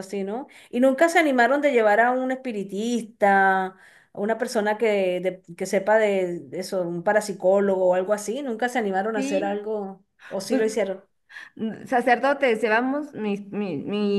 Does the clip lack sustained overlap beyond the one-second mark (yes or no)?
yes